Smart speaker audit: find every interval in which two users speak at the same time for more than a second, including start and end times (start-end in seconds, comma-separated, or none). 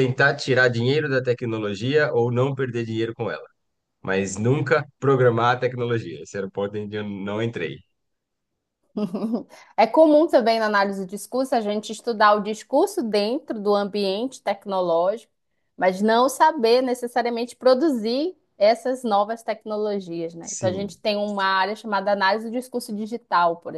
none